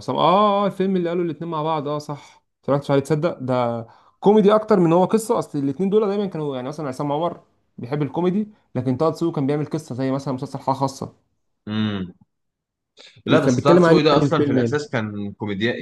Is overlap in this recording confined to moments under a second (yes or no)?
no